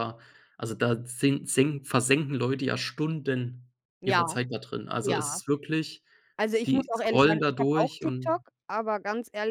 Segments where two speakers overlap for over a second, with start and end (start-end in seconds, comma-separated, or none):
6.7-8.4